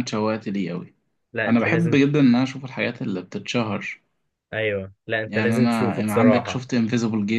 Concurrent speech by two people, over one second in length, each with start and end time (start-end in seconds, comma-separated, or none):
5.3-6.6